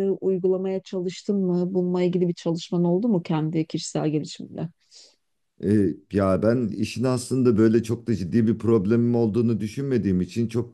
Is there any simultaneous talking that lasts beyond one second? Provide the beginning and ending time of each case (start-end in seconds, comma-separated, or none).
none